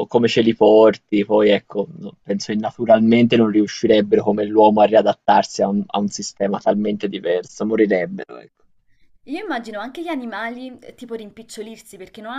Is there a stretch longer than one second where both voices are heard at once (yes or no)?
no